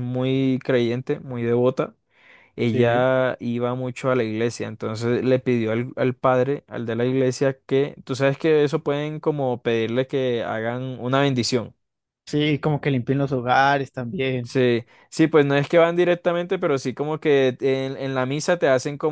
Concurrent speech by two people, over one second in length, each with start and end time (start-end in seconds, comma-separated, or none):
none